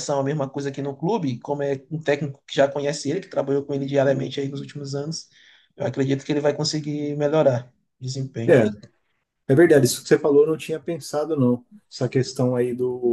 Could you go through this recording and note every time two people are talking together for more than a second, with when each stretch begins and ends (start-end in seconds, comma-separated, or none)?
none